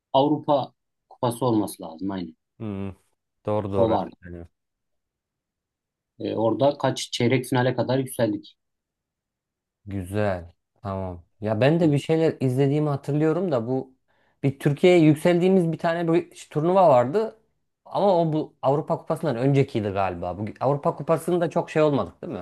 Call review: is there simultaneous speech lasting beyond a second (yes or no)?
no